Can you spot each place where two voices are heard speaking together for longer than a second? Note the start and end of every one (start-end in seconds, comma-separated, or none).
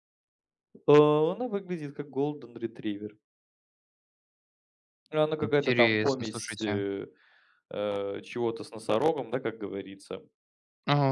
5.4-6.8